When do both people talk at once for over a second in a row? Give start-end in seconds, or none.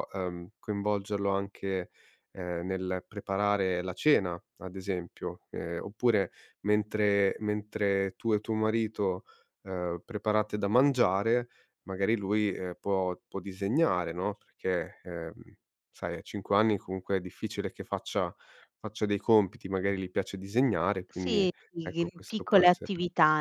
21.1-22.9